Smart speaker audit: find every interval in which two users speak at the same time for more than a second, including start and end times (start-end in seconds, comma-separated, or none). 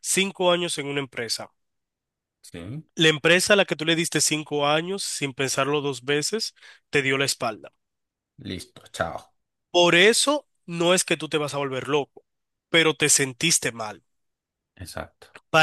none